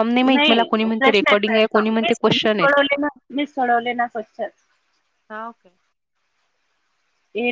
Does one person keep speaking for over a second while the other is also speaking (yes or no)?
yes